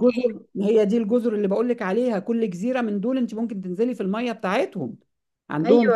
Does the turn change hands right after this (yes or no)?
yes